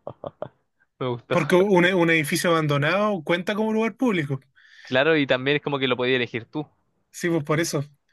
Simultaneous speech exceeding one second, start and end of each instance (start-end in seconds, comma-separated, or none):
none